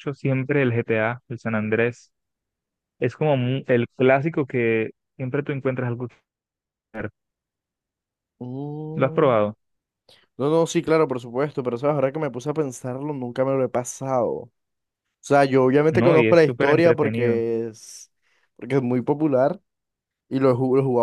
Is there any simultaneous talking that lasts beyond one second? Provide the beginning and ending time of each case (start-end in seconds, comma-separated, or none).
15.9-17.4